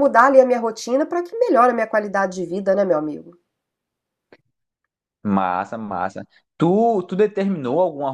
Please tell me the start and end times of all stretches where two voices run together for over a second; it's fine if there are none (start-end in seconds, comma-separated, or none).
none